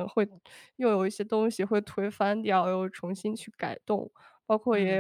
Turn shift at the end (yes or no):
yes